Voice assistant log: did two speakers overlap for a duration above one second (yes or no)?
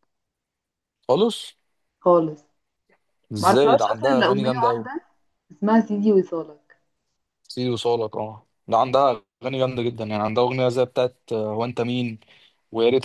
yes